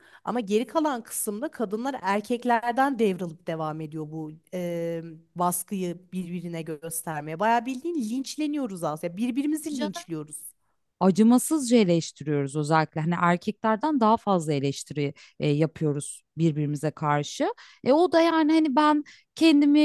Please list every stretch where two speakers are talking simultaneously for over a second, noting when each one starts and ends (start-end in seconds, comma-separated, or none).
none